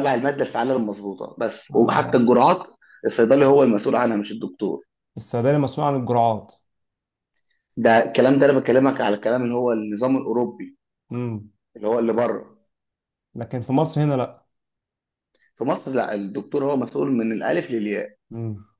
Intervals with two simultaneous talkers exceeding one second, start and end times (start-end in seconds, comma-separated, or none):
none